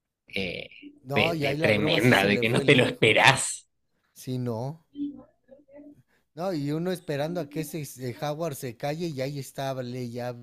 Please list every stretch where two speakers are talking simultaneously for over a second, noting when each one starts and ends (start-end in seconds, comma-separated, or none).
1.1-3.3